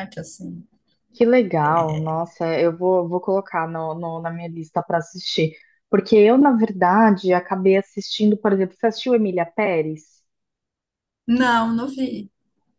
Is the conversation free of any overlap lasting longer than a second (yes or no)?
yes